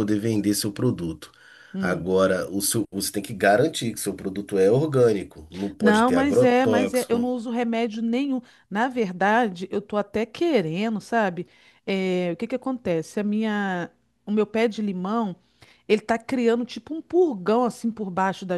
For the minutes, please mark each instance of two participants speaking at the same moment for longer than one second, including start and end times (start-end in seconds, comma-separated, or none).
5.8-7.3